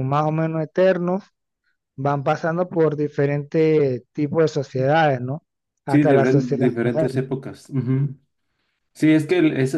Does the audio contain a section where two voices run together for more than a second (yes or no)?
yes